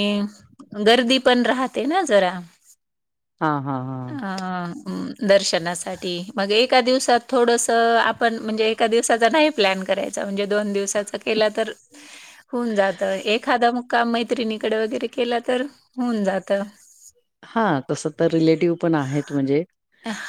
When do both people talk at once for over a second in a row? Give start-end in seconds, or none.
none